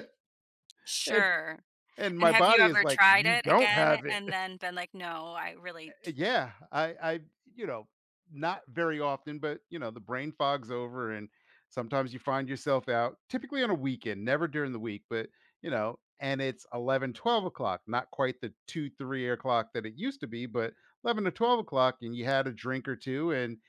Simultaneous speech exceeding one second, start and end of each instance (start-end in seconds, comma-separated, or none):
2.2-4.2